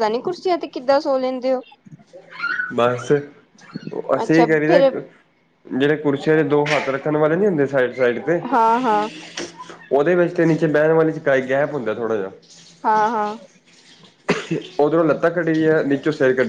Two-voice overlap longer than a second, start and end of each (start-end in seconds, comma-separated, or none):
none